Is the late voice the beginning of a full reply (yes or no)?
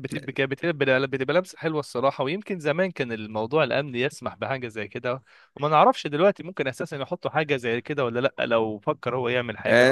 yes